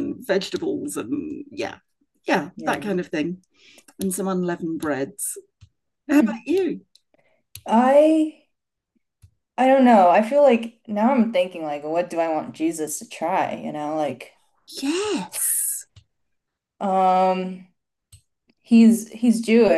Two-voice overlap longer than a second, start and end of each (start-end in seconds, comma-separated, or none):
none